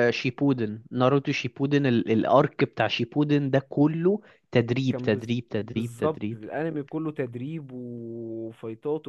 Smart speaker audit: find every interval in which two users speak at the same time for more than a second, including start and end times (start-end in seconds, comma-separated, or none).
4.9-6.4